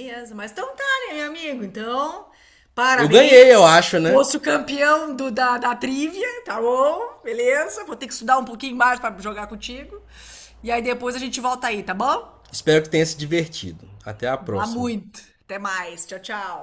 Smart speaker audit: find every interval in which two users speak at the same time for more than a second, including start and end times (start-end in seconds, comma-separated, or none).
2.9-4.2